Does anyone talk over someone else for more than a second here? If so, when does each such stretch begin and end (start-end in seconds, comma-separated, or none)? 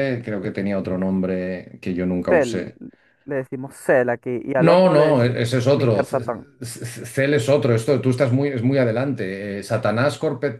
4.7-6.2